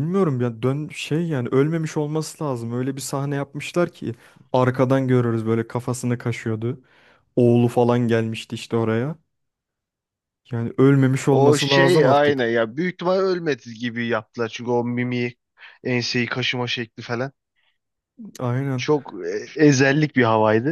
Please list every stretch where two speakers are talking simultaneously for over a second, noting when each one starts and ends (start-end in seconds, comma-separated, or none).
11.3-12.6